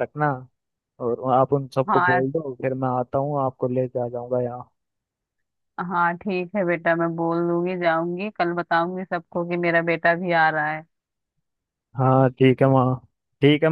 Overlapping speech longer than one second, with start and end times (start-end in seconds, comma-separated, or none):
none